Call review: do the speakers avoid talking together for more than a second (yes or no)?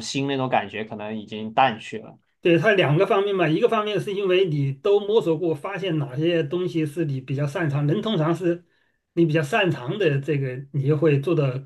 yes